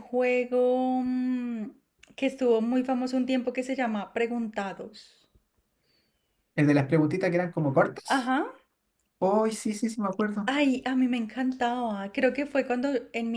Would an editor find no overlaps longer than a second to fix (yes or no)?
yes